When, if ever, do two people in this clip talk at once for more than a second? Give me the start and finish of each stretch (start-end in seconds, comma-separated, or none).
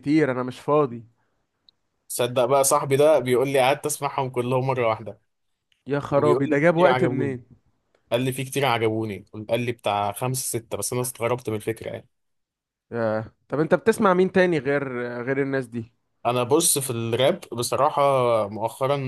6.2-7.4